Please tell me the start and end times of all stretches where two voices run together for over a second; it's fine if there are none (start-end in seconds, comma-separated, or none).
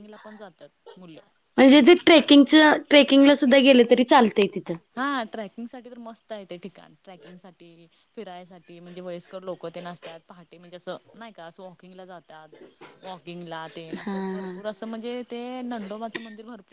none